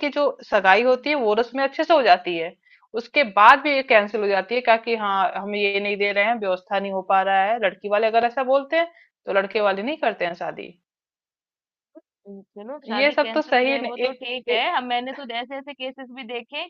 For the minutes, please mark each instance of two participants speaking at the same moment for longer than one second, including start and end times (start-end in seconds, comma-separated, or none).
12.9-14.6